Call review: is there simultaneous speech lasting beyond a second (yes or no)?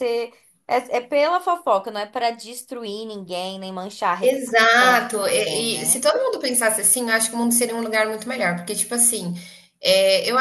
yes